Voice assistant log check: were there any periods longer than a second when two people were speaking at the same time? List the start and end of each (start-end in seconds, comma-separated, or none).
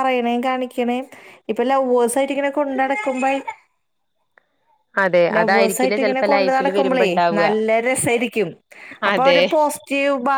5.3-7.5